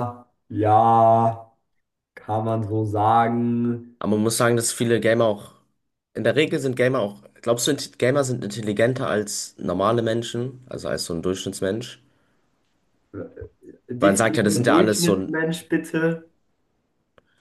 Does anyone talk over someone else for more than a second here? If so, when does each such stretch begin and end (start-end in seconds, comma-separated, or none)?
14.0-15.4